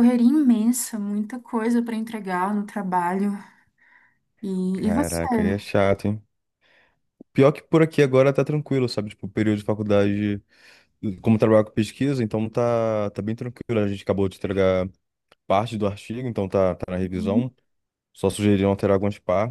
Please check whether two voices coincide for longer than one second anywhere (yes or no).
no